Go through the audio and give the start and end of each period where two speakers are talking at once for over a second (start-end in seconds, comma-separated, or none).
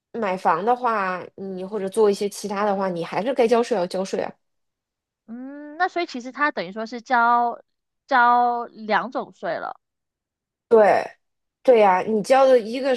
none